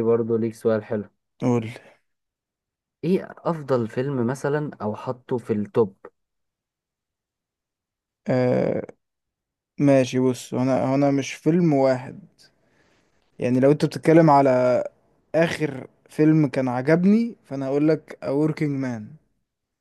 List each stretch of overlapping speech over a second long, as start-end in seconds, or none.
none